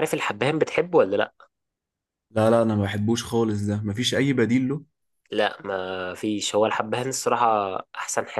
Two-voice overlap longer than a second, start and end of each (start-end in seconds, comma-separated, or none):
none